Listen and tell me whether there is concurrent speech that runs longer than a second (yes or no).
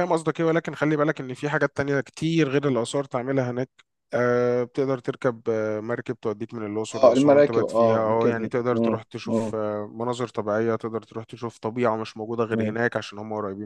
yes